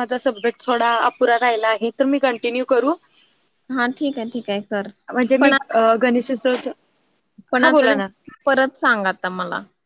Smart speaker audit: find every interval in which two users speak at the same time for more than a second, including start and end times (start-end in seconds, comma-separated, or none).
none